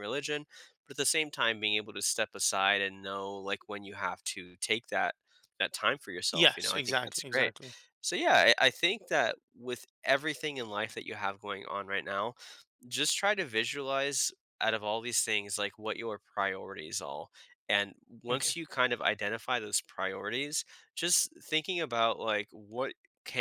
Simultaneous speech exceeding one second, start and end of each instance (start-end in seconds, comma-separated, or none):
6.3-7.5